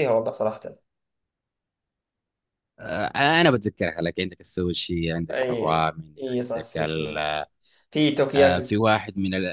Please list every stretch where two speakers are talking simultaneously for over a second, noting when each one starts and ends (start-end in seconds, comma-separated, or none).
5.3-7.2